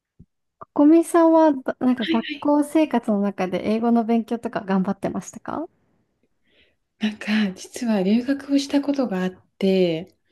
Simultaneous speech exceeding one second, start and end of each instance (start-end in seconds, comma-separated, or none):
none